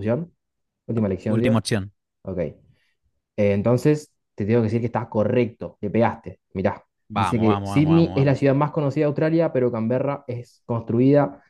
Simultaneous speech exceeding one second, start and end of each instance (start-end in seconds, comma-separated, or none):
7.1-8.4